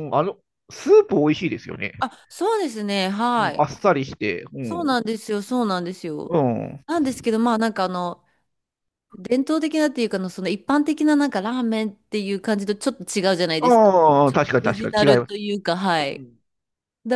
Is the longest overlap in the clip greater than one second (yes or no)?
yes